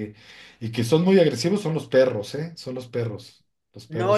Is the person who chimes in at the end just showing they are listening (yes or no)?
no